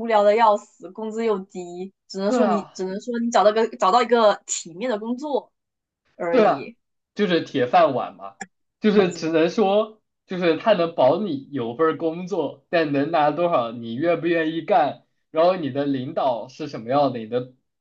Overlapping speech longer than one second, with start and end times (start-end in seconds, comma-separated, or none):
none